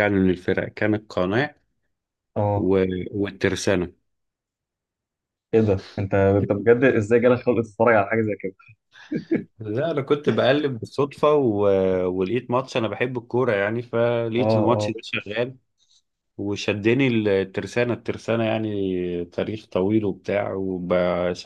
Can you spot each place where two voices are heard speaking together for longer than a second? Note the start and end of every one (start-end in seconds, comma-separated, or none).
none